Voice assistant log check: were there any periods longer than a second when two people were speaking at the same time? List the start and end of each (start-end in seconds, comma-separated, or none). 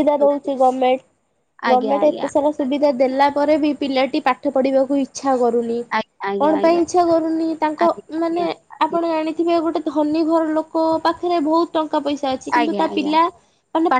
none